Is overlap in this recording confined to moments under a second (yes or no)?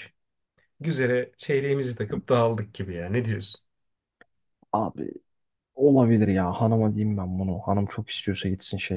yes